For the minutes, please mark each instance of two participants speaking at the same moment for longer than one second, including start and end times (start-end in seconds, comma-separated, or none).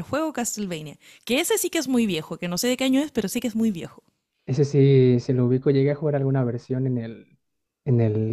none